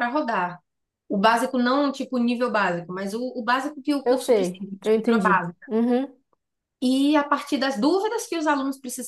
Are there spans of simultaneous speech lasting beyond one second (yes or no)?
yes